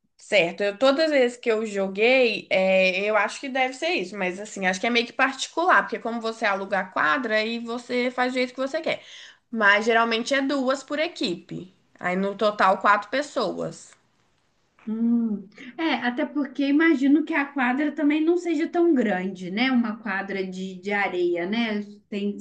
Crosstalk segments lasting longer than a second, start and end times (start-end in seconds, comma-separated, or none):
none